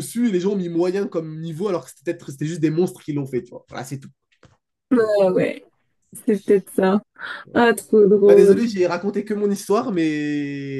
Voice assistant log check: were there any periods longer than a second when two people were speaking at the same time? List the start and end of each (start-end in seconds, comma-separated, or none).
none